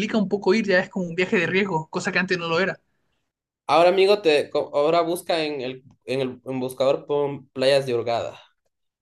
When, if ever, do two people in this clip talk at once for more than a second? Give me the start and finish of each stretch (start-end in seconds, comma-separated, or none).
none